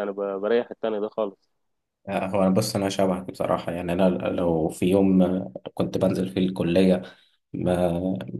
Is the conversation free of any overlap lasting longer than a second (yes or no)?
yes